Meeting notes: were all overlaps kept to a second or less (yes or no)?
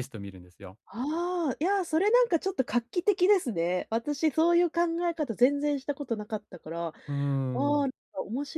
yes